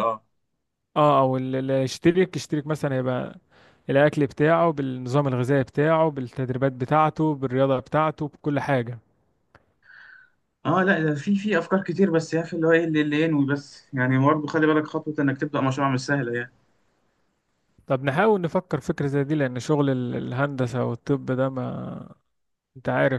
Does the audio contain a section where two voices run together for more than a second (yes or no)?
no